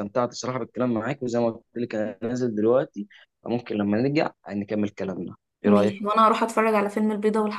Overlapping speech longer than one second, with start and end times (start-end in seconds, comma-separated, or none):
none